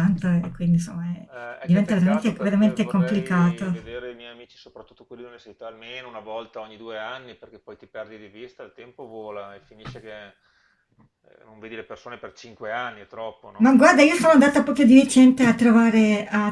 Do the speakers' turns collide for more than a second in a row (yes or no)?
yes